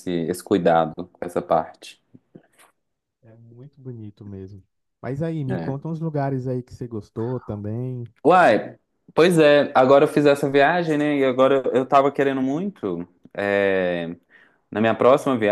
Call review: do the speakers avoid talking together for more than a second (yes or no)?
yes